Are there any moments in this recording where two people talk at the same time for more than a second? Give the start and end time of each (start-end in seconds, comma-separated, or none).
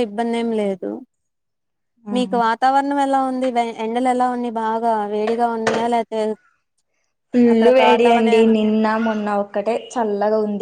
none